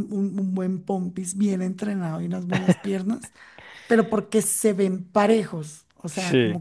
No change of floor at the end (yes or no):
yes